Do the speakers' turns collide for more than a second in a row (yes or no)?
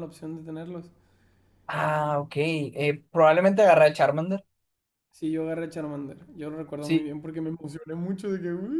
no